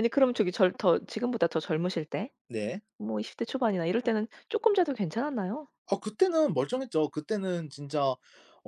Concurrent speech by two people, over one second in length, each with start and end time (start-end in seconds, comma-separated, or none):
none